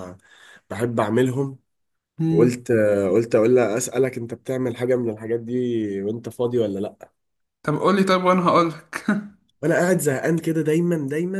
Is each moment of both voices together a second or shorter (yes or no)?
yes